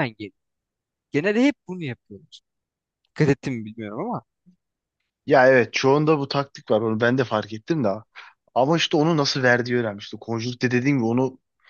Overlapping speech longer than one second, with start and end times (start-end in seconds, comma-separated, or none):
none